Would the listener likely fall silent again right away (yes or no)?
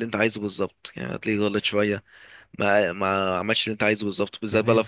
yes